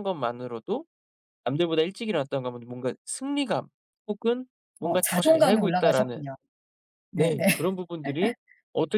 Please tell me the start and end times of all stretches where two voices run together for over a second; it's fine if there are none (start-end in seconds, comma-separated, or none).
4.8-6.3